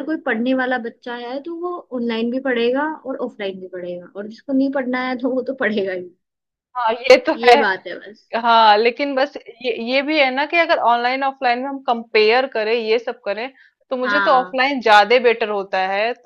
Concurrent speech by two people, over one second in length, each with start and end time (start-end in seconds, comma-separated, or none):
none